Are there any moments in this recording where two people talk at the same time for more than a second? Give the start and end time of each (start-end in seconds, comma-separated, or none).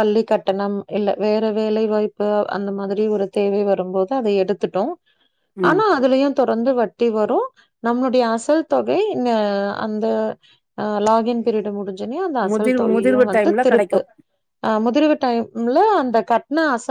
12.5-14.0